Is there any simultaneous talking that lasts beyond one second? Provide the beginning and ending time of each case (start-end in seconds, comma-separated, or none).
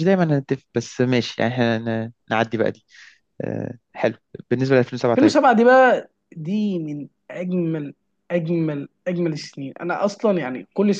none